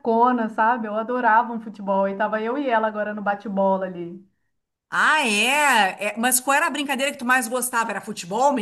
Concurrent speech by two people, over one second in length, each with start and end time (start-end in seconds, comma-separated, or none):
none